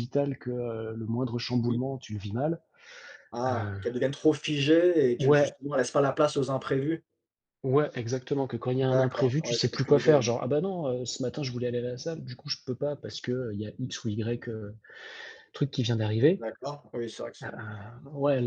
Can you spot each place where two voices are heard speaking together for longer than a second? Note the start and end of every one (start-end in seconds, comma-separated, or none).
8.9-10.2